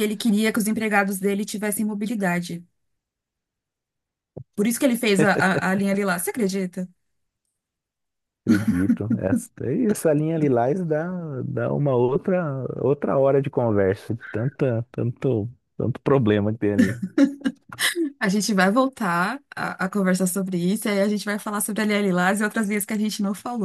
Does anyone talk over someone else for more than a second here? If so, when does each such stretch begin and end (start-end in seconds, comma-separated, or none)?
none